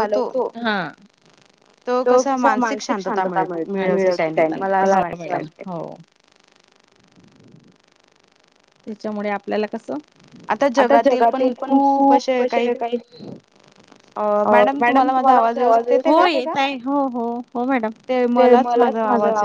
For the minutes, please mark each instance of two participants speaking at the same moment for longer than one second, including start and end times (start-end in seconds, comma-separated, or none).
none